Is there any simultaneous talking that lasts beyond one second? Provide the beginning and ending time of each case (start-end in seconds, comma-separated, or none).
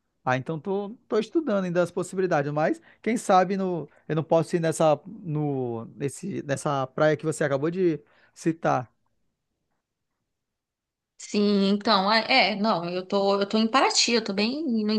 none